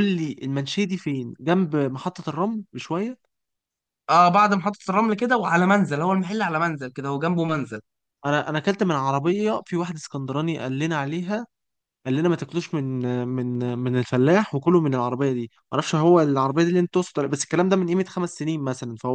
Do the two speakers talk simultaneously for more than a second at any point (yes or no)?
no